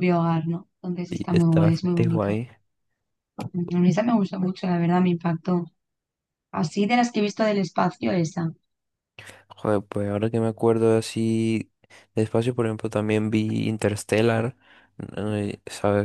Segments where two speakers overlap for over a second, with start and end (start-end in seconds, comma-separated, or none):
1.1-2.4